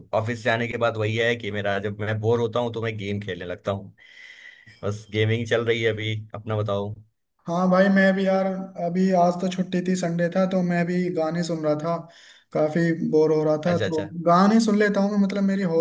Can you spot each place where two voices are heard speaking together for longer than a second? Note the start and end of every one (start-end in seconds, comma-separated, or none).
none